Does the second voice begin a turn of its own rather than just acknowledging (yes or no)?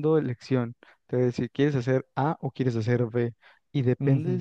no